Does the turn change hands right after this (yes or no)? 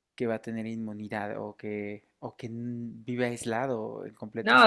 yes